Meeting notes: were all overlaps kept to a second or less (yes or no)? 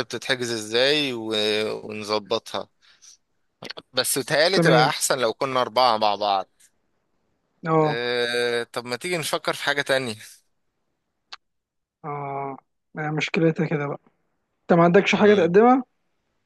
yes